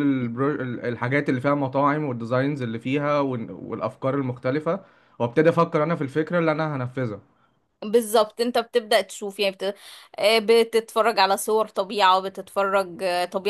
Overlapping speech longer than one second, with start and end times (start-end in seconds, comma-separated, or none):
none